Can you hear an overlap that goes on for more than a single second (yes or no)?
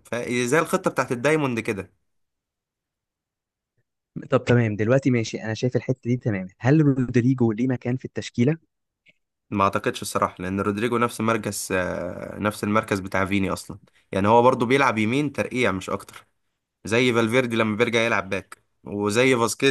no